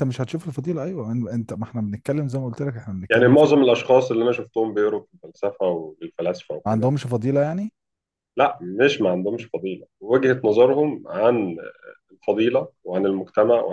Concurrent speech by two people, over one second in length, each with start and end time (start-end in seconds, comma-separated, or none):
none